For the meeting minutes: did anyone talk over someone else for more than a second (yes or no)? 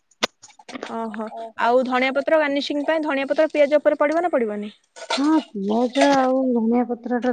no